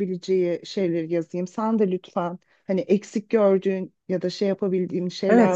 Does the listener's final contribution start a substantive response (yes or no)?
yes